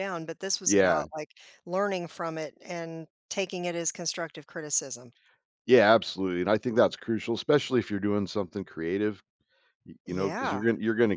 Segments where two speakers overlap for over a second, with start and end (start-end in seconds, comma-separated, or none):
none